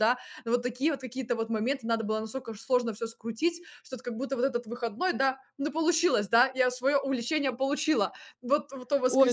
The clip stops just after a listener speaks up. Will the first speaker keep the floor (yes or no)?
no